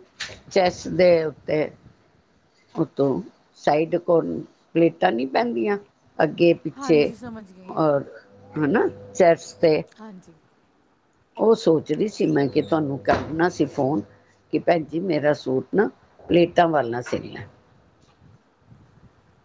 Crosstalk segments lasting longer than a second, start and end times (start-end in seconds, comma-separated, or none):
none